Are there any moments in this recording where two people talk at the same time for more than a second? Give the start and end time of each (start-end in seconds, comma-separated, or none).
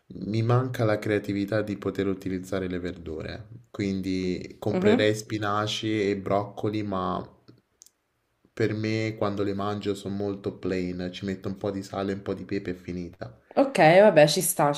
none